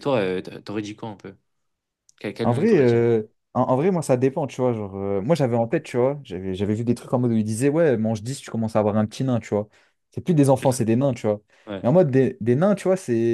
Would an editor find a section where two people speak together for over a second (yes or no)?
no